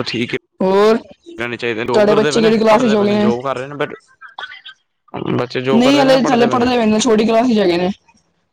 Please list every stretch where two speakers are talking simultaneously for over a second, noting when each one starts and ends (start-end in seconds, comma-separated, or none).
1.8-3.1